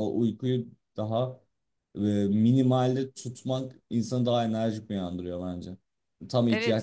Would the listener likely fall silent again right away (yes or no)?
no